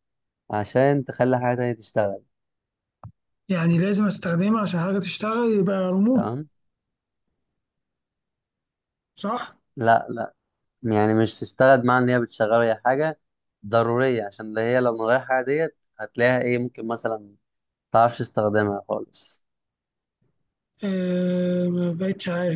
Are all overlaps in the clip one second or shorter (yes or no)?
yes